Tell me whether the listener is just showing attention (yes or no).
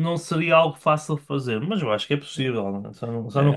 no